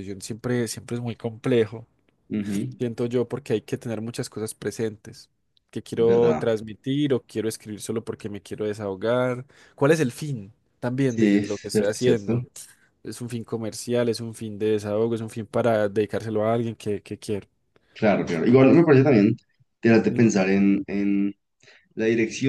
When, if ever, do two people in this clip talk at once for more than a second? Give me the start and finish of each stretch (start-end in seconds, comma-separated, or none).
11.0-12.4